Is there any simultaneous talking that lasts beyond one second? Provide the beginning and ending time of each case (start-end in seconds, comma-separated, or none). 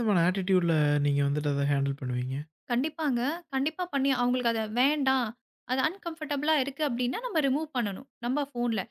none